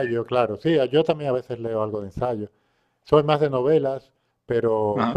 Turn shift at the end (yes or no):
no